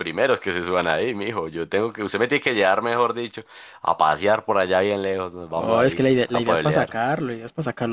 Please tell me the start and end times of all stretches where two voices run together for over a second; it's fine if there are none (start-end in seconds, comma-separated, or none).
5.5-7.0